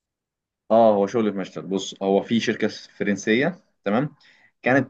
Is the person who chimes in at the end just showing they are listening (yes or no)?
yes